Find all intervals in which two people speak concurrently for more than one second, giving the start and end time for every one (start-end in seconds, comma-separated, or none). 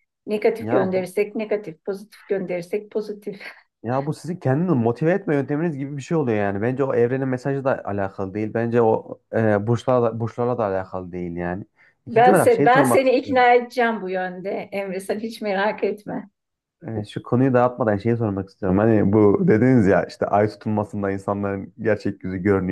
12.1-13.4